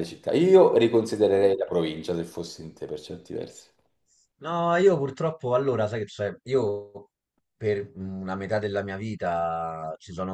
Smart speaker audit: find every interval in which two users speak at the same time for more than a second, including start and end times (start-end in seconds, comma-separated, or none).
none